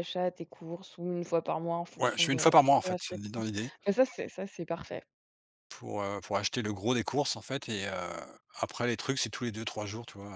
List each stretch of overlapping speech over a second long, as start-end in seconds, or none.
2.0-3.5